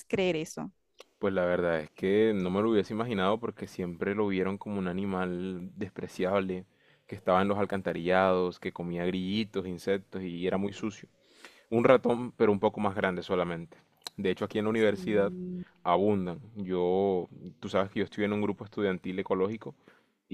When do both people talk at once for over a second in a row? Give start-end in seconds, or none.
none